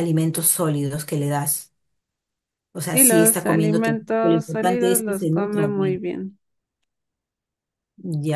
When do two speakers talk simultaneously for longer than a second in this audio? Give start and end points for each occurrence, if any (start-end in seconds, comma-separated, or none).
2.8-6.0